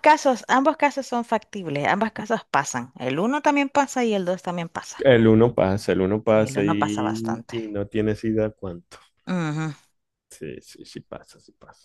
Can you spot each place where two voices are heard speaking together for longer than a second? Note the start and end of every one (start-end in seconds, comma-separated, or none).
6.2-7.5